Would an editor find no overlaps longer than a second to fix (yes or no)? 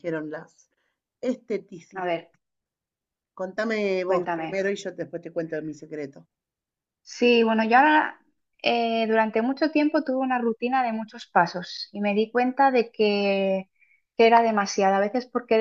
yes